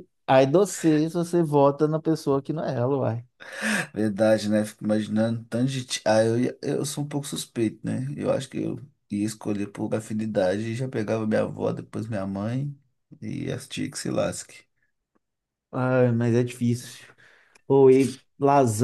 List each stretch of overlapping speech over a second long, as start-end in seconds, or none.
none